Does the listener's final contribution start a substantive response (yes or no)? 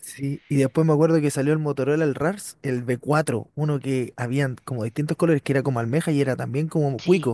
yes